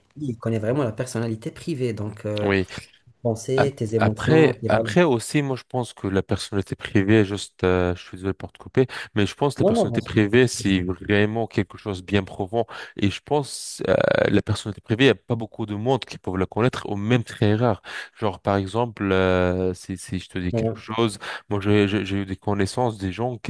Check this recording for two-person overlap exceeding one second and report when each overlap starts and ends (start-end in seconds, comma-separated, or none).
3.6-4.9